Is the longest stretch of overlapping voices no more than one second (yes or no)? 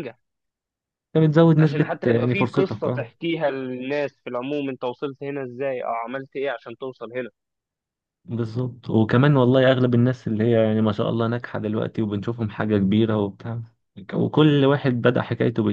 no